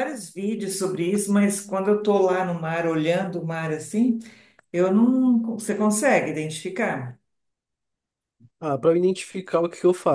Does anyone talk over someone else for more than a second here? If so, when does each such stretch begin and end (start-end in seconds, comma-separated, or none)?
none